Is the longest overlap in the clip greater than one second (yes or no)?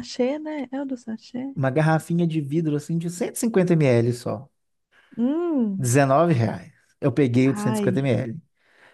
no